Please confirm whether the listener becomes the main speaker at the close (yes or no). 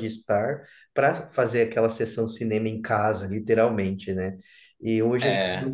no